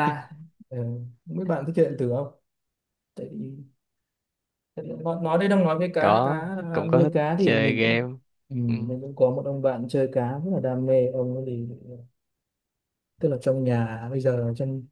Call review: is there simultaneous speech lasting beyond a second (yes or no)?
yes